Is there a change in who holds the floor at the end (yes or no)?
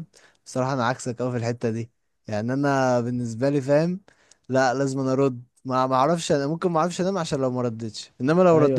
yes